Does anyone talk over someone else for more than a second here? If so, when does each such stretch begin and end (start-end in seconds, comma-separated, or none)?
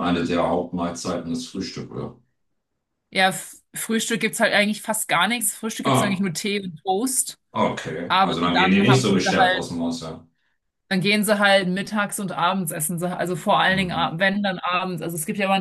8.1-9.7